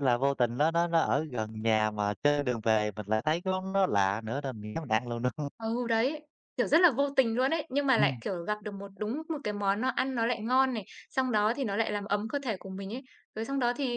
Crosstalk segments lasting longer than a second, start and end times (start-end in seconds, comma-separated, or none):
none